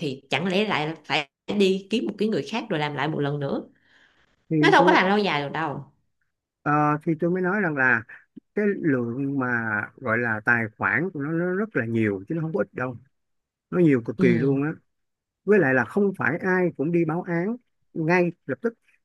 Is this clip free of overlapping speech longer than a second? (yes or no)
yes